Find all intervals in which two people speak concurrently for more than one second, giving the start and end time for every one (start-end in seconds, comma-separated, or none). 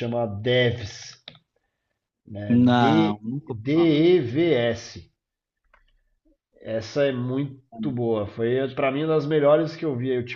2.5-4.0